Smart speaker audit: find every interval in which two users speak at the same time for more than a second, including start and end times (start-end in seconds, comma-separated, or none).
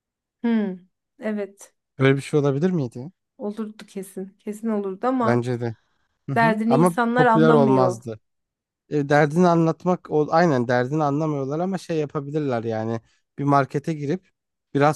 6.3-8.0